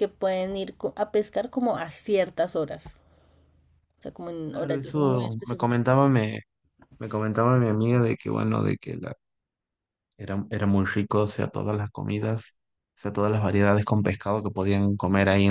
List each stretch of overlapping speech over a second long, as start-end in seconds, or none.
4.5-5.9